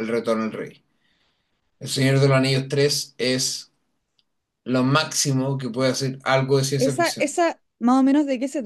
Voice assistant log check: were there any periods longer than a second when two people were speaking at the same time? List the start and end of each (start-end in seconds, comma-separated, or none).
none